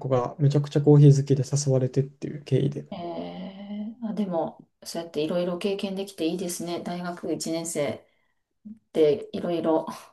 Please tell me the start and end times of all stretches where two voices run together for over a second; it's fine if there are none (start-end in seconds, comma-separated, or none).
none